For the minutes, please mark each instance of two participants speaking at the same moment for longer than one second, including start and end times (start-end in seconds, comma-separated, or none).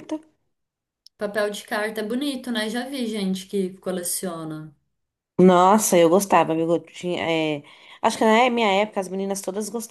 none